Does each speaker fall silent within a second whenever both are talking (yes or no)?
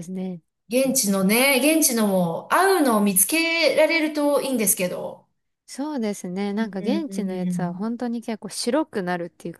no